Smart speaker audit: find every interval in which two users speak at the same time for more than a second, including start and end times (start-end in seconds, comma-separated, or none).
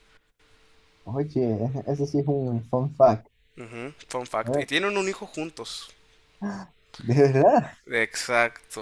none